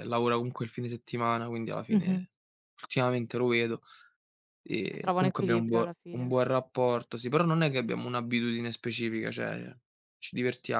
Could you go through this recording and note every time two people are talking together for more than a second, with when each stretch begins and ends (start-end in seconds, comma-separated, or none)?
4.9-6.4